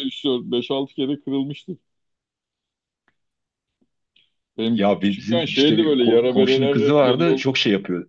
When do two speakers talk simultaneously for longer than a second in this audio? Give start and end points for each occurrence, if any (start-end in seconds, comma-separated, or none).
4.8-7.5